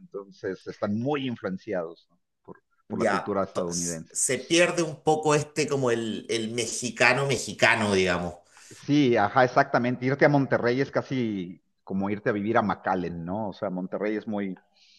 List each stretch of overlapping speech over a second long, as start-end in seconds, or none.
2.9-4.1